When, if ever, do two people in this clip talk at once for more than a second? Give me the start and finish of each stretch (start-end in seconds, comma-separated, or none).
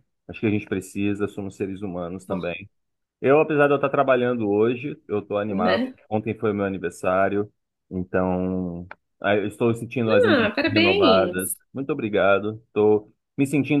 10.1-11.6